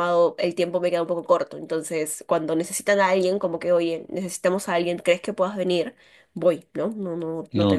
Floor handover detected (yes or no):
no